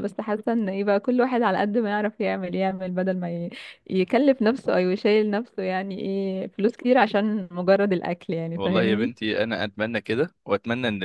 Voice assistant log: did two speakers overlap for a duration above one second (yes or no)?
no